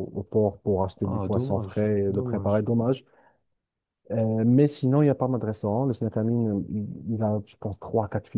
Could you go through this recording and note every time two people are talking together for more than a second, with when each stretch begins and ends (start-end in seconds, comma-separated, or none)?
1.0-2.6